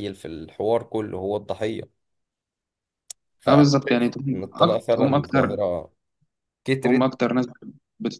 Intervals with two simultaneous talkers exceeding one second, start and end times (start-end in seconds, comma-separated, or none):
3.5-5.6